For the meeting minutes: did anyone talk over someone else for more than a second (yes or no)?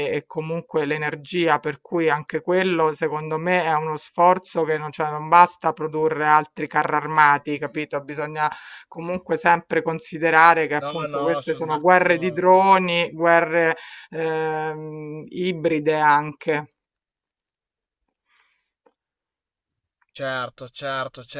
yes